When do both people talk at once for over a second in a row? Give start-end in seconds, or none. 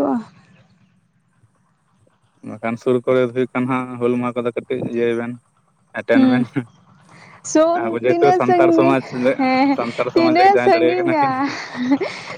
7.4-9.0, 10.2-11.4